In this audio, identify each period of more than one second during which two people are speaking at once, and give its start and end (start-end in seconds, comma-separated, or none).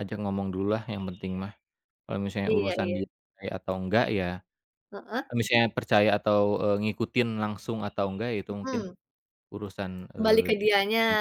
none